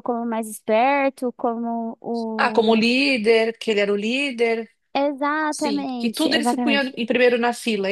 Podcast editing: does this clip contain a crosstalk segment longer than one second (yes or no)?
yes